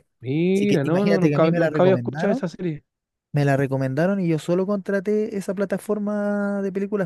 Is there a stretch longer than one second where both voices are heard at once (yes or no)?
yes